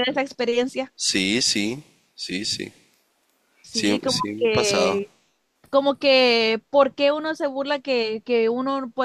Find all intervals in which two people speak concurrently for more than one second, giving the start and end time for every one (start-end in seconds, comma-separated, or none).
3.7-5.0